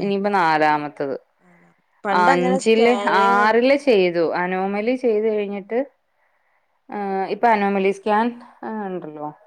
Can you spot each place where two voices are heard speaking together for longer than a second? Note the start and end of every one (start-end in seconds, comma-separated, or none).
2.2-4.1